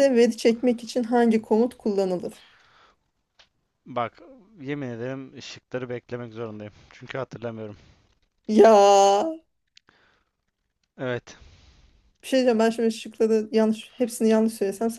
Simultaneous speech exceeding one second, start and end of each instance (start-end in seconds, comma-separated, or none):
none